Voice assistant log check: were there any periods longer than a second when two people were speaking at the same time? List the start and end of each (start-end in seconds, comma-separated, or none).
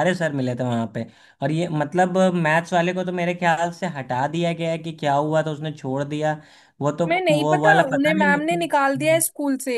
7.1-9.2